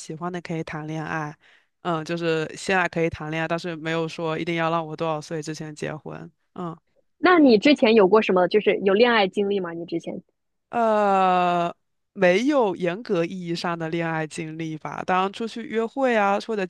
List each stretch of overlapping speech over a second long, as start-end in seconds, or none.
none